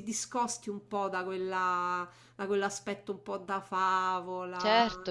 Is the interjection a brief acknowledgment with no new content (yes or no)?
no